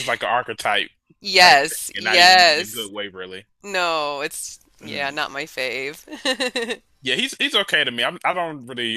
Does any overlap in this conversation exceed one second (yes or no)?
yes